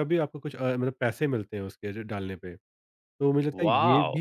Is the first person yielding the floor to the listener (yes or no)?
no